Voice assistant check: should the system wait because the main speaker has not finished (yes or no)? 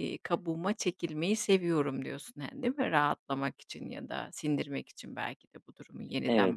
no